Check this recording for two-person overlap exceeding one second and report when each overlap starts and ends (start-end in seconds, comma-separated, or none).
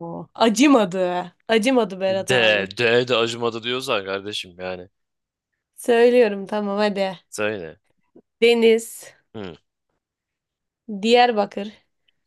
none